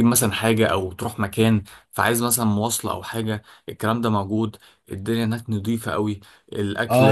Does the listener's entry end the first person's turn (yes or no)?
yes